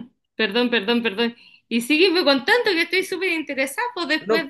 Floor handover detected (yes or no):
no